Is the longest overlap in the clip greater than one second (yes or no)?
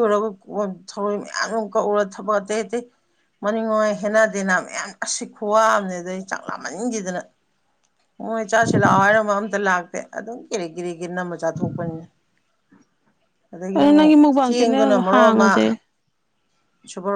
yes